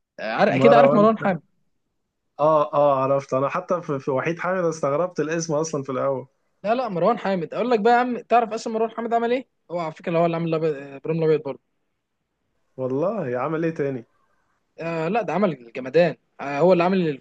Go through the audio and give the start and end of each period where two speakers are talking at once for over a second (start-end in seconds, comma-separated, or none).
none